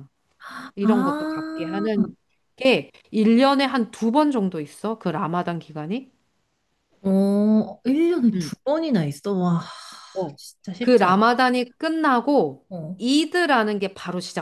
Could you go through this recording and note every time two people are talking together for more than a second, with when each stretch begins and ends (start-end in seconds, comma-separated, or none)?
0.8-2.0